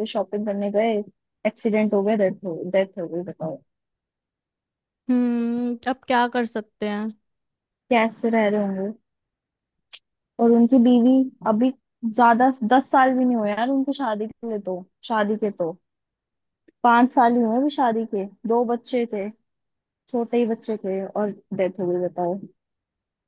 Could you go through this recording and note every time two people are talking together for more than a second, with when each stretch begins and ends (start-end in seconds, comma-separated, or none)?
none